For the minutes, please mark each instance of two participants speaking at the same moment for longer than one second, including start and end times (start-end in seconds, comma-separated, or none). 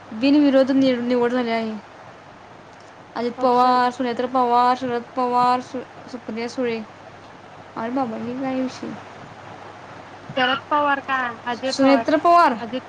none